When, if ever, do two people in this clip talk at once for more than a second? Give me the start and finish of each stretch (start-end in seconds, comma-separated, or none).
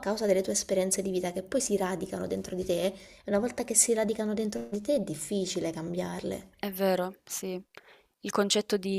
none